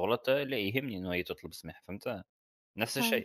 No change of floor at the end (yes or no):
yes